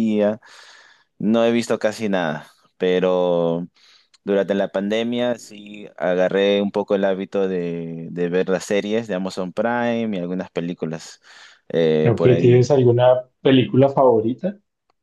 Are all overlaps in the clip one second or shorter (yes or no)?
yes